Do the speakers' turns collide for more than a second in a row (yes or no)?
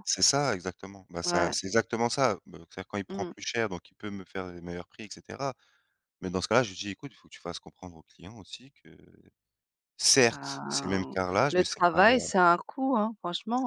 yes